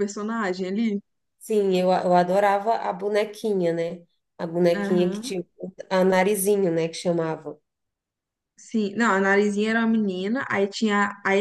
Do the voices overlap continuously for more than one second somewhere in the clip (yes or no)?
no